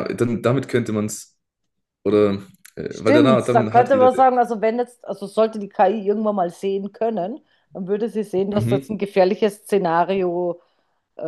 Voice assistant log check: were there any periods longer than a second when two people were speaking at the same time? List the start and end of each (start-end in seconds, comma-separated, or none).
2.9-4.2